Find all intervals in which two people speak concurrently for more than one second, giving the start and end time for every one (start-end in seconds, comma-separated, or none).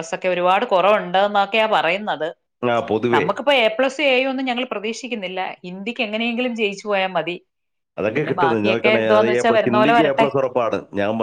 8.2-10.3